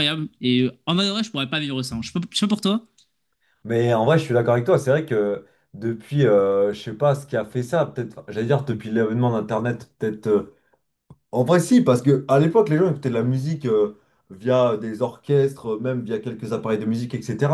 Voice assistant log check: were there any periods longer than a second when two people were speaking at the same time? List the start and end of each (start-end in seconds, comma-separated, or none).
none